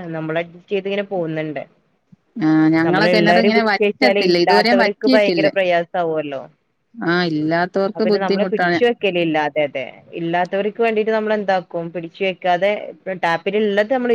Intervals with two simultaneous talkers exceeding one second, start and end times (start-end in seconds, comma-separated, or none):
2.9-5.5